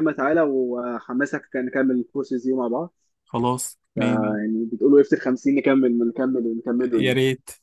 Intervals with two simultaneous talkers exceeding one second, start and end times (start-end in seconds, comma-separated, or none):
none